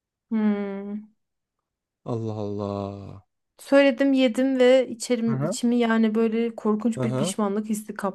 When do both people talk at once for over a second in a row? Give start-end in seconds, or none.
none